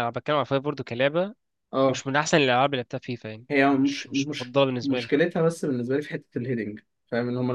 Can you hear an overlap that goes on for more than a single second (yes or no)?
yes